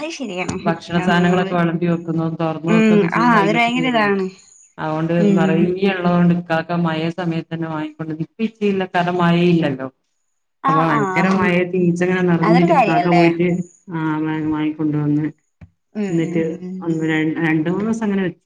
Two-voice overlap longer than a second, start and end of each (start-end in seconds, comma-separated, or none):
2.7-4.2